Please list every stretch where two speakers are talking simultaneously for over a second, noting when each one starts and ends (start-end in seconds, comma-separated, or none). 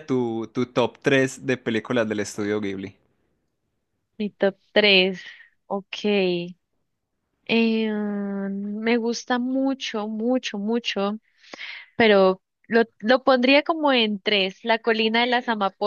none